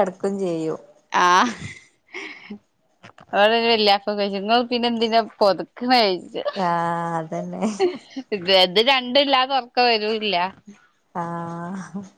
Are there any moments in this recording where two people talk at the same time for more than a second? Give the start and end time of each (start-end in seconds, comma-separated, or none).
none